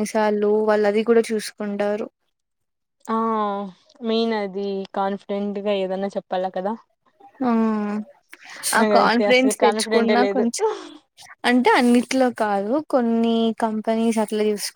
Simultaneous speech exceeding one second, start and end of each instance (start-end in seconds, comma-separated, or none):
8.8-10.4